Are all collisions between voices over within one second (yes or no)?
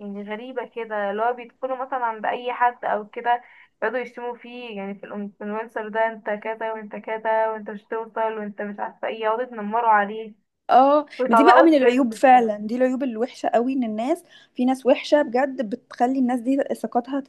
no